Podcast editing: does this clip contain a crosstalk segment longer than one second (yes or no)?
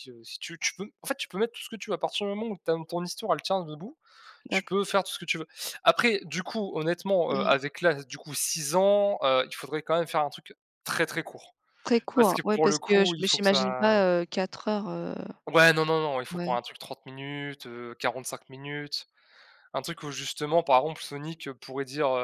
yes